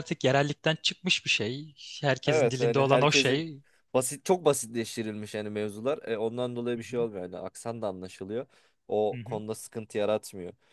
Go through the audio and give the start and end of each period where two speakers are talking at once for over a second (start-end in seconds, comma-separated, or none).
2.3-3.5